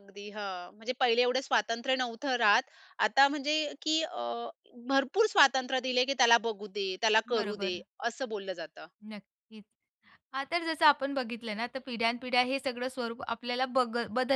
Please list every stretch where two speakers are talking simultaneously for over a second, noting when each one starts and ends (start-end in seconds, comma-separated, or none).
none